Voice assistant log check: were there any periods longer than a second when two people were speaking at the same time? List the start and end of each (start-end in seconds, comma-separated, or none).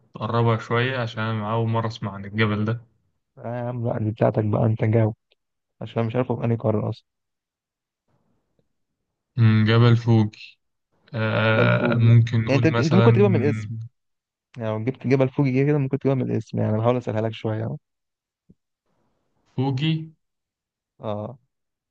11.6-13.1